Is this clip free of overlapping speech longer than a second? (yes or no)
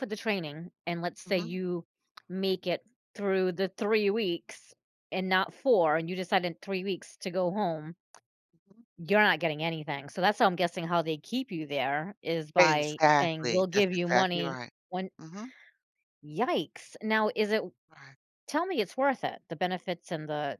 no